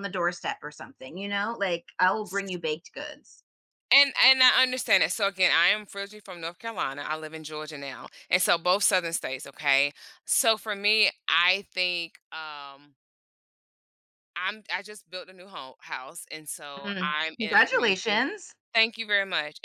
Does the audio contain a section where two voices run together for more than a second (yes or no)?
yes